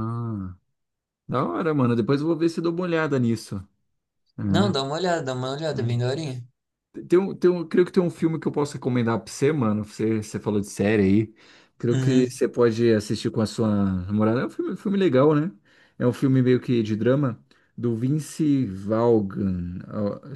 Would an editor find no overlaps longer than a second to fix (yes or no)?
yes